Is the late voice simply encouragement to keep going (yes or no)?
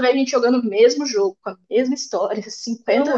no